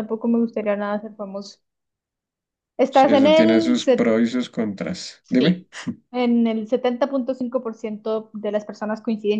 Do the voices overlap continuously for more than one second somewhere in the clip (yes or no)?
yes